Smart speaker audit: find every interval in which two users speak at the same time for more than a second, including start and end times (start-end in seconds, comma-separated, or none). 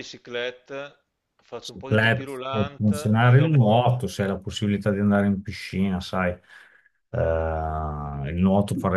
1.6-3.7